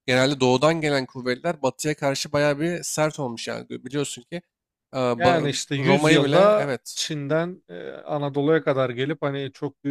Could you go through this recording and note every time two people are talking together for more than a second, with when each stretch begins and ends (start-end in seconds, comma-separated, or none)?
5.2-7.0